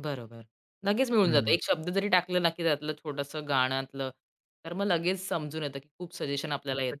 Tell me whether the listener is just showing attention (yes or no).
no